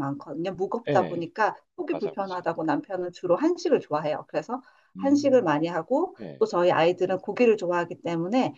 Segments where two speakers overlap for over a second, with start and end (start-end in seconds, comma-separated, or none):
none